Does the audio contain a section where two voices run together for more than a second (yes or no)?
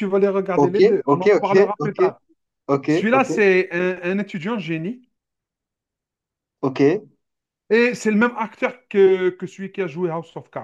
yes